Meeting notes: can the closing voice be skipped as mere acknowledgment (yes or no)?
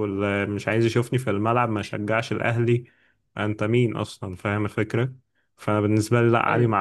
yes